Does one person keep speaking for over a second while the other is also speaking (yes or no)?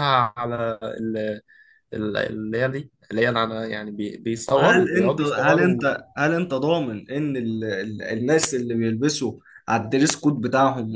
yes